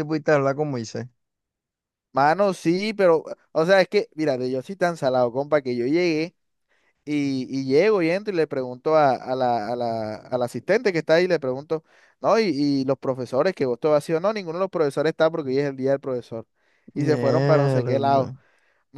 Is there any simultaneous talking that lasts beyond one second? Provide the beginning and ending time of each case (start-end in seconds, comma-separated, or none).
17.0-18.3